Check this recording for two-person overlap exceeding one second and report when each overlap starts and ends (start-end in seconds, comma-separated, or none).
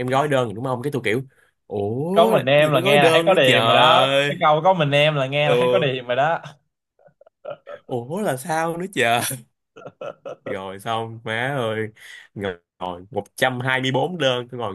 2.1-4.3